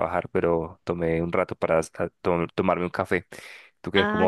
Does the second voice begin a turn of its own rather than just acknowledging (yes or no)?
yes